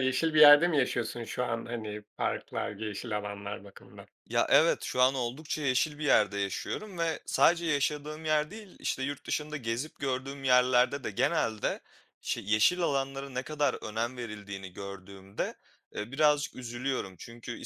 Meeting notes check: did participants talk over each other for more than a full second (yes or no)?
no